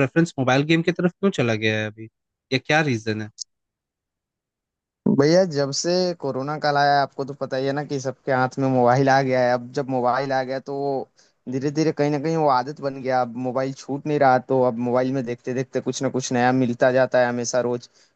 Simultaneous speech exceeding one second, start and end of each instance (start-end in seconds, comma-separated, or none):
none